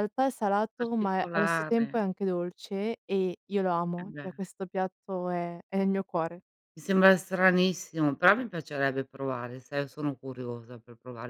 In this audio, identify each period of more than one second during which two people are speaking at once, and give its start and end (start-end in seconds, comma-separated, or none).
0.8-2.0